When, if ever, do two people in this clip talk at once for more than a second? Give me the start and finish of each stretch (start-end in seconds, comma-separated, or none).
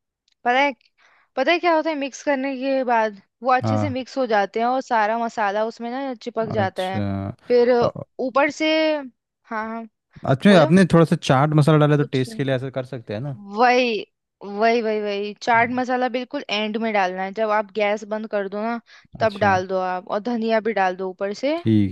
none